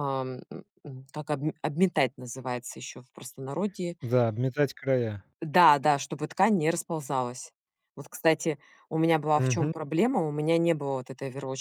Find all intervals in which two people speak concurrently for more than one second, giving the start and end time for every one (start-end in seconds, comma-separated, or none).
none